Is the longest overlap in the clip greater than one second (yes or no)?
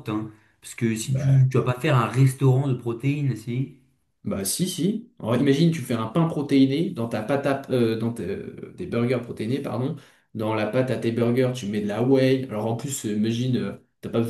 no